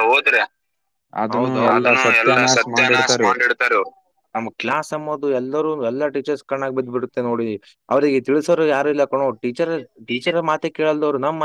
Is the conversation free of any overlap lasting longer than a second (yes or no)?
no